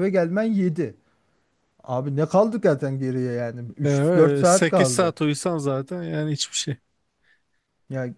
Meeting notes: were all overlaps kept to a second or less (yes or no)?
no